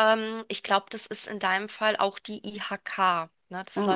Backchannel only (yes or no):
yes